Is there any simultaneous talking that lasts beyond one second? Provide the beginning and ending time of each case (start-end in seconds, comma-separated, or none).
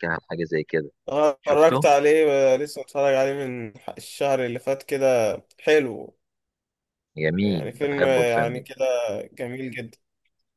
7.4-8.7